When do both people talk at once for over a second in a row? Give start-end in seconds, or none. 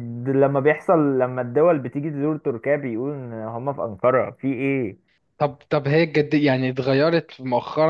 none